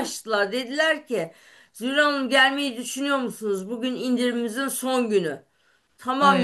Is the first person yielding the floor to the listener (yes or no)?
no